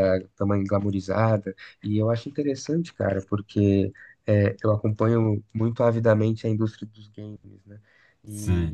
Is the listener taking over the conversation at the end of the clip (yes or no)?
yes